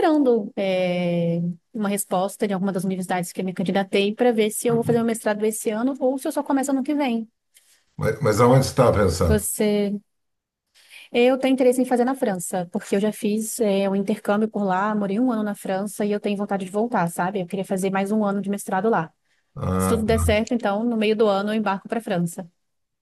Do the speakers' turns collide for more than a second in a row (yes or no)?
no